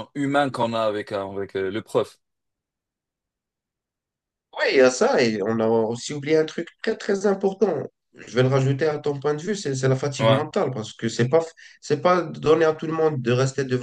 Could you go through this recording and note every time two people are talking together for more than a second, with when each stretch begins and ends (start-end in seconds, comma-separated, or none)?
none